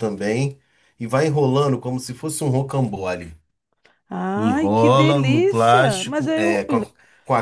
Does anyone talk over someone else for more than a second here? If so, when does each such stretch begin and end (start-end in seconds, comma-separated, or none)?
4.3-6.7